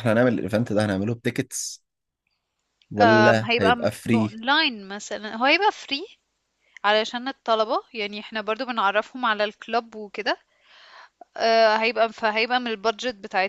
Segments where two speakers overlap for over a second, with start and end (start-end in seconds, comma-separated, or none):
3.0-4.4